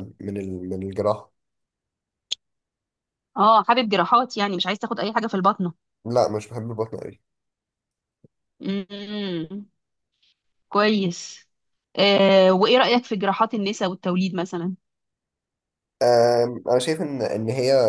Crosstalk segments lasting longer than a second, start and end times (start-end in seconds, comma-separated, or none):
none